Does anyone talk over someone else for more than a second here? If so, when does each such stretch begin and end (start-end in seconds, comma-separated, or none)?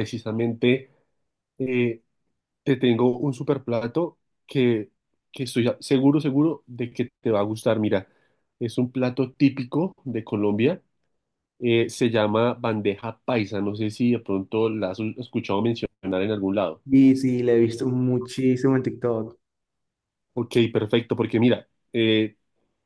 none